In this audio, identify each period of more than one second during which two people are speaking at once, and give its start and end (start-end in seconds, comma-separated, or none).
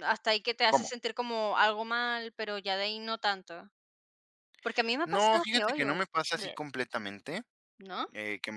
5.0-6.6